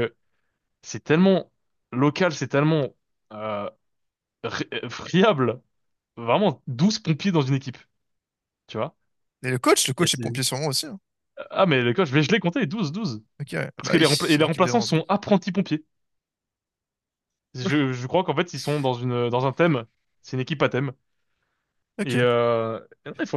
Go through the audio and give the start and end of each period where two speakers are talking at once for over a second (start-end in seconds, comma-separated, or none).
13.8-15.0